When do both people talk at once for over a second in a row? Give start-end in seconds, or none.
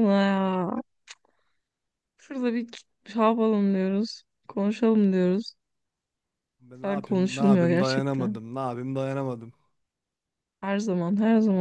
6.8-8.4